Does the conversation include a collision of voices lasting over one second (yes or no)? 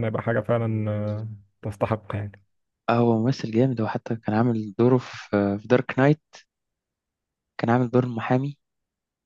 no